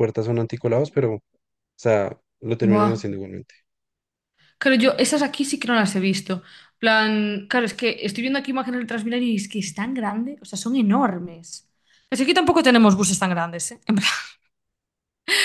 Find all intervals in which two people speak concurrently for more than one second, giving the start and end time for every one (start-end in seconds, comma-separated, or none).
none